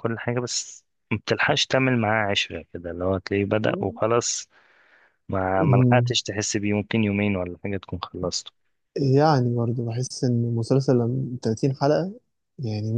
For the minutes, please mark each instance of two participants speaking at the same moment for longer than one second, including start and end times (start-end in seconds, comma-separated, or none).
none